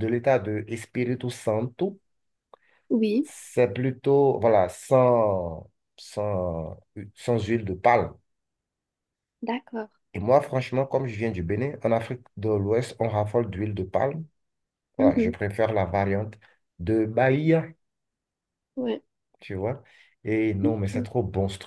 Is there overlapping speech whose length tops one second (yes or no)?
no